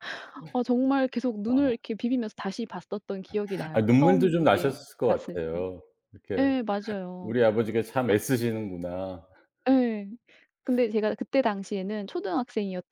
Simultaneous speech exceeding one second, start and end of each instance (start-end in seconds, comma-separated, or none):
3.7-5.7